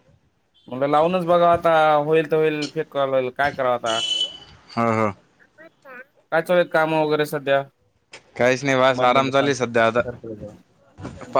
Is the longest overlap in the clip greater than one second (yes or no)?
yes